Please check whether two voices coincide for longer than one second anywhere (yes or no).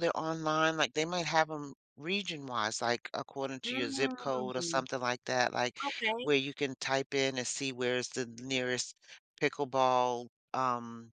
yes